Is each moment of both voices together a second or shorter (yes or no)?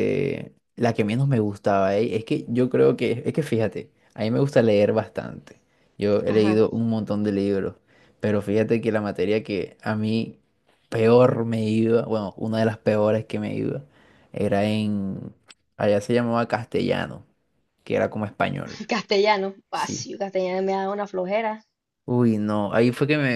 yes